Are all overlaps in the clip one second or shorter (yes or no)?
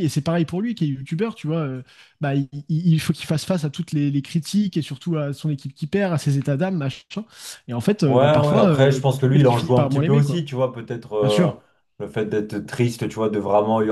no